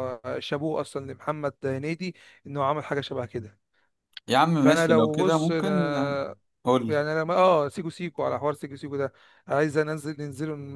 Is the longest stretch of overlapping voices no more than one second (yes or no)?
no